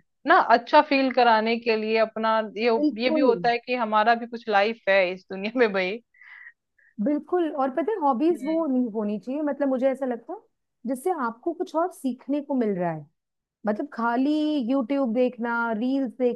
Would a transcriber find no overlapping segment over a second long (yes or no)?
yes